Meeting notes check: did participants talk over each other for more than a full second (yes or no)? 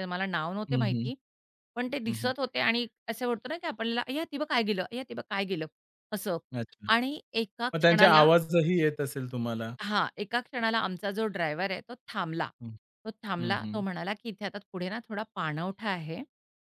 no